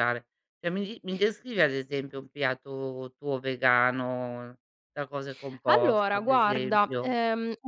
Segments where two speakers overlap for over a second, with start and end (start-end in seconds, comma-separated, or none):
5.7-7.1